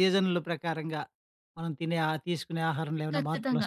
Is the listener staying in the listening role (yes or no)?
no